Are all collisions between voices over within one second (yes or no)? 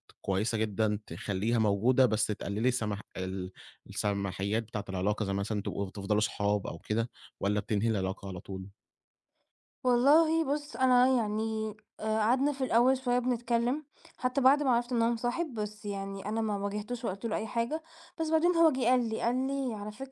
yes